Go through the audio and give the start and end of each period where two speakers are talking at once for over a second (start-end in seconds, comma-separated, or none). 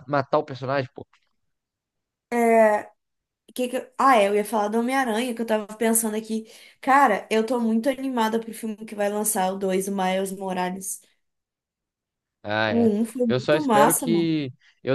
12.7-14.3